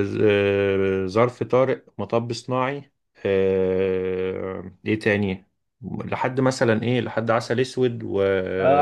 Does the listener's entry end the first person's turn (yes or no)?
yes